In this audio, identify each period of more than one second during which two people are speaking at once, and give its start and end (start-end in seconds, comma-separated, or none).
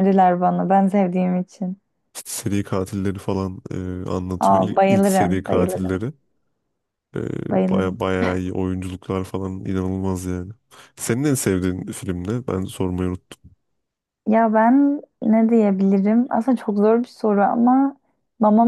4.4-6.0